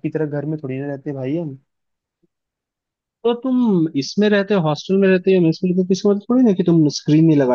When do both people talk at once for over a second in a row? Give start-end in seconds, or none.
none